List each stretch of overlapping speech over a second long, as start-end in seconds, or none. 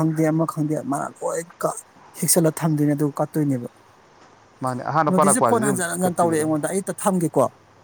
5.1-6.5